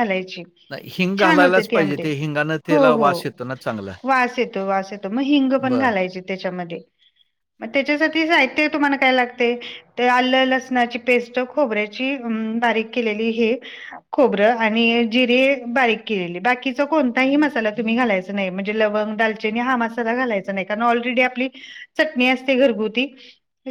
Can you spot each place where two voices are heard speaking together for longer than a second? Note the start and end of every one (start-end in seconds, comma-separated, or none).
0.7-2.0